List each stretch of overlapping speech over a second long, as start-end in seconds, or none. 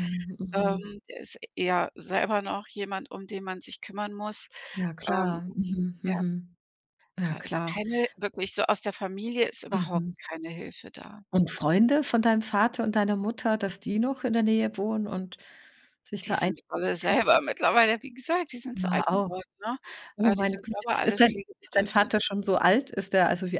20.2-22.1